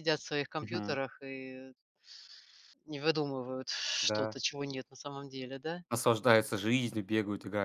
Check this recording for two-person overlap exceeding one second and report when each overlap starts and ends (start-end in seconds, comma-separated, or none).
none